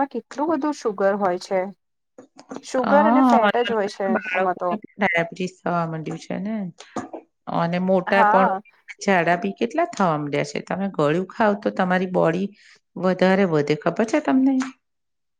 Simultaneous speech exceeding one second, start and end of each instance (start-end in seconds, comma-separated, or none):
2.9-4.7